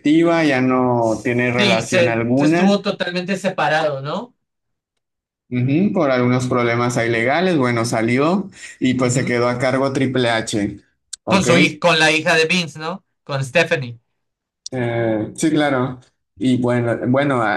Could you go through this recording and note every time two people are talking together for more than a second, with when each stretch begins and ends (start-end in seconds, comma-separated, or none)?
1.0-2.9